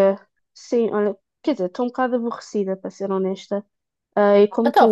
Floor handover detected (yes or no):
no